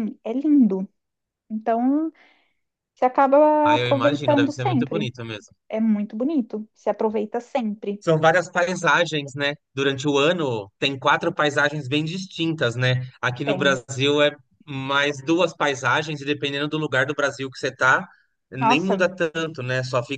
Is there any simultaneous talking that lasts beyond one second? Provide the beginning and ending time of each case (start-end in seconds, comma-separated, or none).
3.6-5.1